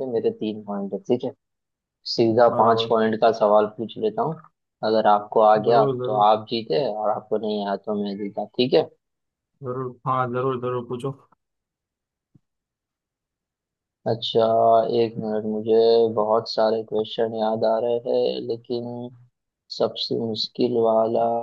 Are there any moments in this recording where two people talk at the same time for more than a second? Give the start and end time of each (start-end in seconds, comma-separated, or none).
none